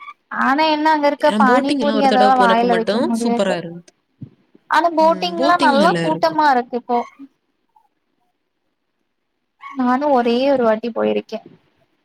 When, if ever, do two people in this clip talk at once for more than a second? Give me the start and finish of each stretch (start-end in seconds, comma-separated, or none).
1.3-3.5